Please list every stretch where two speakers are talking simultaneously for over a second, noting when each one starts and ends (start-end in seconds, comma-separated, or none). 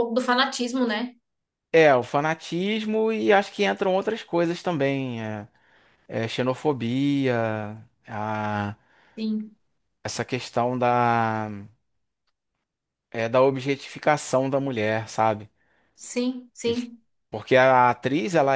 none